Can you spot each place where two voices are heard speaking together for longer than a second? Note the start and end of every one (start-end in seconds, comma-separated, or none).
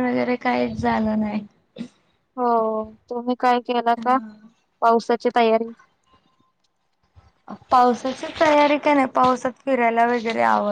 none